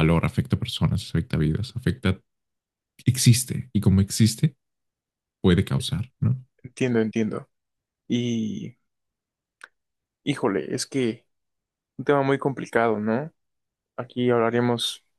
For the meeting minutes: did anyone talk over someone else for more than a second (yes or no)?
no